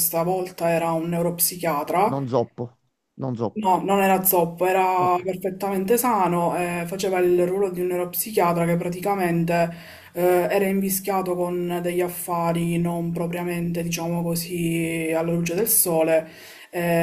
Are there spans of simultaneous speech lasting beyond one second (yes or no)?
no